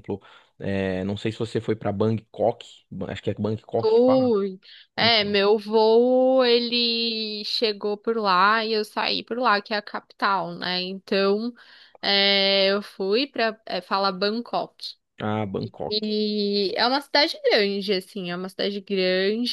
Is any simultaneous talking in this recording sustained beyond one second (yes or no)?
no